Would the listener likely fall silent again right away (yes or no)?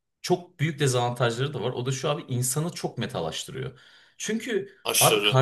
yes